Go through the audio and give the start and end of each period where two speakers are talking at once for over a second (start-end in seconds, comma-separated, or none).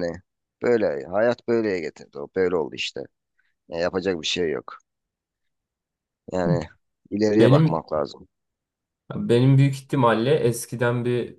none